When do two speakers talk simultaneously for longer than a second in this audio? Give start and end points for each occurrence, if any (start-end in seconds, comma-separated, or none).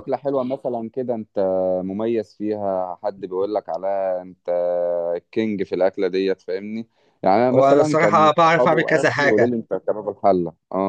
7.5-9.5